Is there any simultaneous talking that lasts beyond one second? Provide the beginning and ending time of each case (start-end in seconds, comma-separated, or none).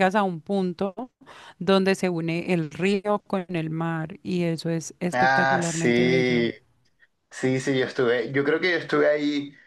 5.1-6.5